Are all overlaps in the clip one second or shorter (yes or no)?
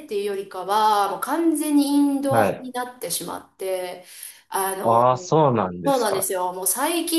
no